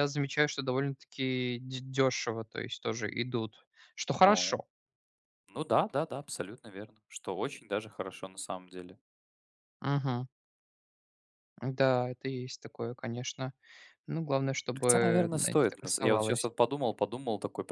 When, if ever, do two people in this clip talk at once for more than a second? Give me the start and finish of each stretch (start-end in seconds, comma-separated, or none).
14.8-16.5